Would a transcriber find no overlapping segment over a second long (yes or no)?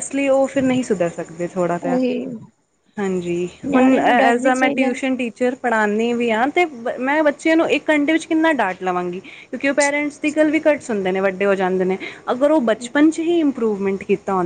no